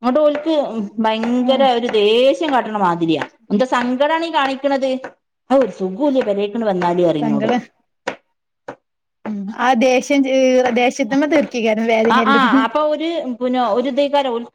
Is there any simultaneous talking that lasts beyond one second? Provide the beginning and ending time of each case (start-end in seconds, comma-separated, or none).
none